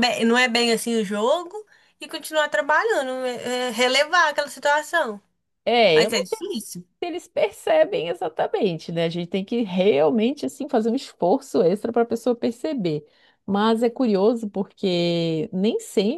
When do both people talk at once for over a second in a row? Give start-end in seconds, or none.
none